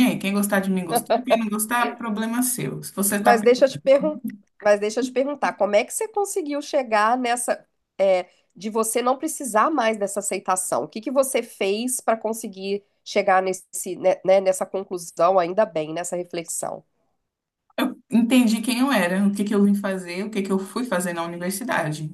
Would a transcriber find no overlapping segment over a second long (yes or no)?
yes